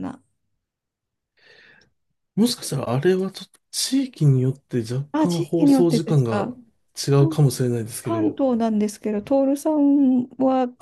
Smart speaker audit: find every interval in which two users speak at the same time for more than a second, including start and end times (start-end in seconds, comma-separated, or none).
5.1-6.5